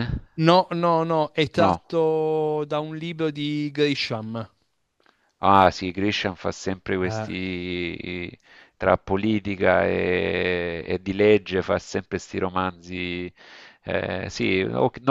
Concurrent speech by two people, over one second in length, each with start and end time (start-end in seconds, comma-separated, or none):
none